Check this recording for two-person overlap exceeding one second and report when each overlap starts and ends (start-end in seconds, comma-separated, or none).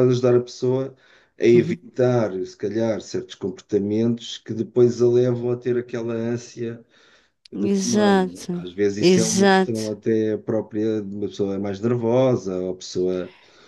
7.5-9.9